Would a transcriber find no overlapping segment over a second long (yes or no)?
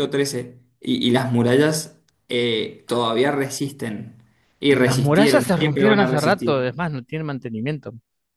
no